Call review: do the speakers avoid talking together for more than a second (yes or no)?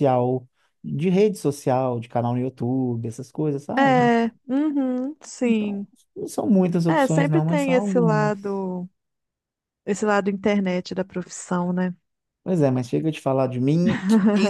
no